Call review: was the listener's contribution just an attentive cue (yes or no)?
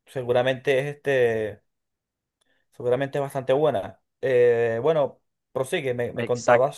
no